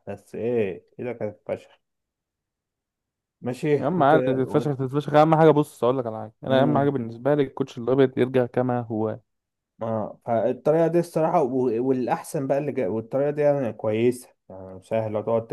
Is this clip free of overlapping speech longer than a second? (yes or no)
yes